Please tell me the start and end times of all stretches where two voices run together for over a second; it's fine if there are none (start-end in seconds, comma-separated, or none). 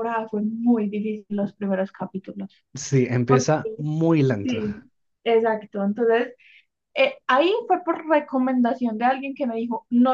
none